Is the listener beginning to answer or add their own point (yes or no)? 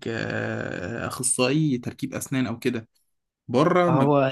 no